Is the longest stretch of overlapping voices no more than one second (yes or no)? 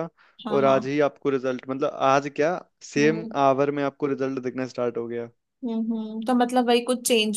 yes